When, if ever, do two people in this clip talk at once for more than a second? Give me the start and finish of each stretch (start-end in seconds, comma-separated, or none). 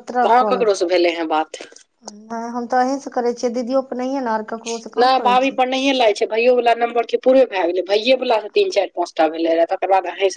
none